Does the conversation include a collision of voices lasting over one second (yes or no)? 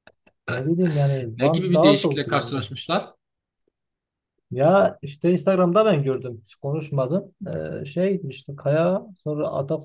yes